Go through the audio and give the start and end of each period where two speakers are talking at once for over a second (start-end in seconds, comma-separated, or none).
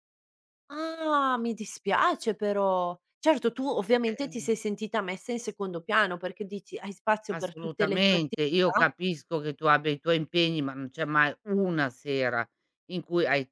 7.3-8.9